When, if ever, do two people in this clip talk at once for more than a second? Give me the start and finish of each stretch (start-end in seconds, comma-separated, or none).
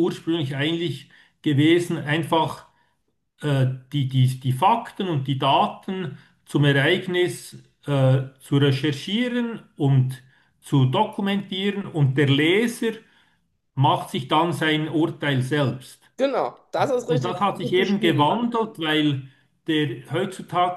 17.1-18.5